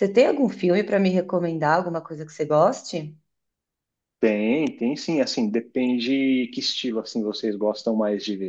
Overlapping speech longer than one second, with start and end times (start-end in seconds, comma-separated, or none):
none